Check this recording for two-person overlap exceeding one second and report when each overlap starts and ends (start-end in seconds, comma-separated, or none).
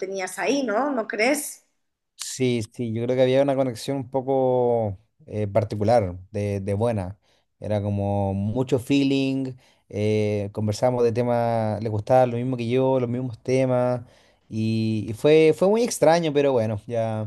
none